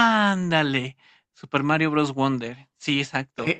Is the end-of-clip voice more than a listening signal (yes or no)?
yes